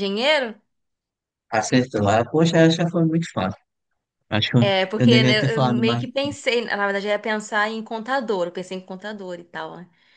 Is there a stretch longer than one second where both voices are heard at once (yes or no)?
yes